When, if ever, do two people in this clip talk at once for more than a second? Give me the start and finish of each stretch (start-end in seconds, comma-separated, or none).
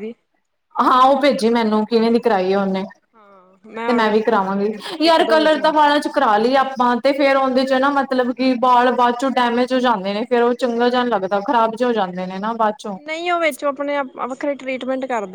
none